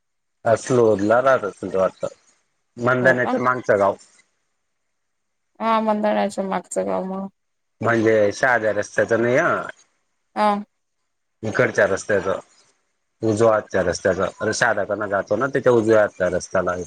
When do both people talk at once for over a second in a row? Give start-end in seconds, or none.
none